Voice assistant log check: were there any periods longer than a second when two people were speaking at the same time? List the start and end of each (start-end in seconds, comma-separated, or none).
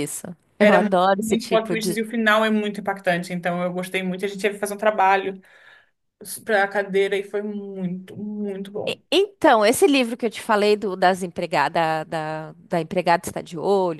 0.6-2.0